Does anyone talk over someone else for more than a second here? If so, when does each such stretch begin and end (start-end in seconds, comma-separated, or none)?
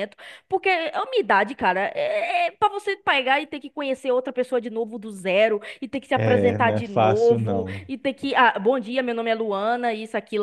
6.2-7.9